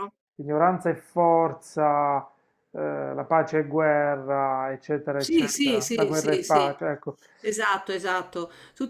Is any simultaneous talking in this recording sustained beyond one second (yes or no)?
yes